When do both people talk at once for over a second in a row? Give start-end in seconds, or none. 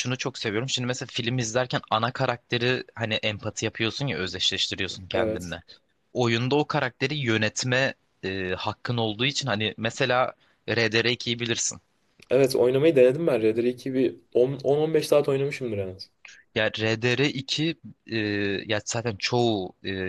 none